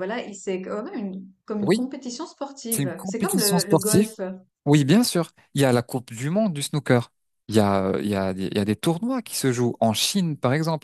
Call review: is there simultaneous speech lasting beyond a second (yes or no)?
yes